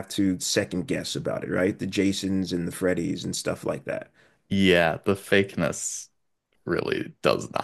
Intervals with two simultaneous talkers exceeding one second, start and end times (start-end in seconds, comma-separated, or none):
none